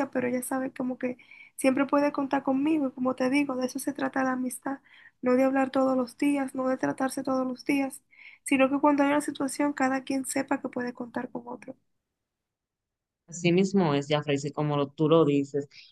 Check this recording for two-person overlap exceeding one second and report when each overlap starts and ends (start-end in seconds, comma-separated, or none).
none